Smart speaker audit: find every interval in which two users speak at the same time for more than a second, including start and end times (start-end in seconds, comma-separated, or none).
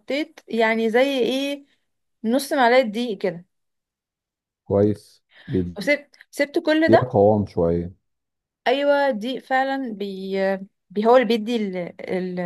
none